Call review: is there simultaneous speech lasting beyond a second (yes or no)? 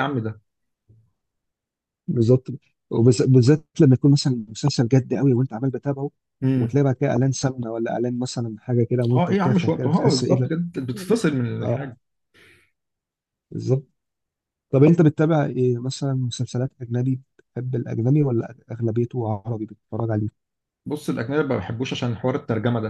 yes